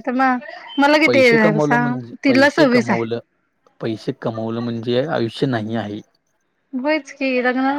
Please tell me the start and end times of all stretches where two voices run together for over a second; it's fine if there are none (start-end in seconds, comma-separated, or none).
1.1-3.1